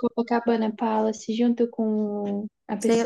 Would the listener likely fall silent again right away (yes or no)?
no